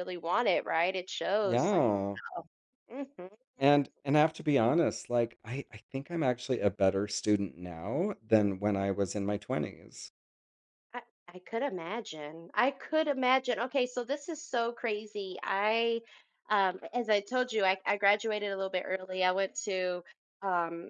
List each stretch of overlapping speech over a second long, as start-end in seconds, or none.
none